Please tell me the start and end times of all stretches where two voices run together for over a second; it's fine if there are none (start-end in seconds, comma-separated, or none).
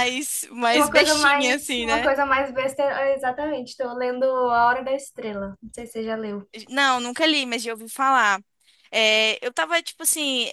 0.7-2.1